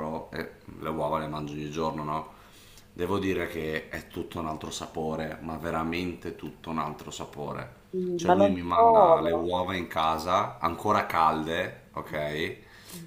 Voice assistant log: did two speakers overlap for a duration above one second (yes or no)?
yes